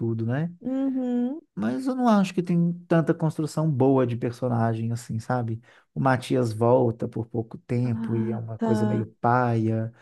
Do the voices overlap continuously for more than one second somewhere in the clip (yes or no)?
yes